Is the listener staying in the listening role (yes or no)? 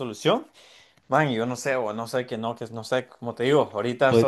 yes